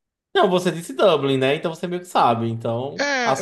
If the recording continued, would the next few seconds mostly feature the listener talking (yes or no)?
yes